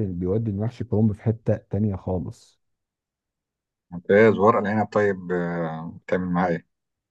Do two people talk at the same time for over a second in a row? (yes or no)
no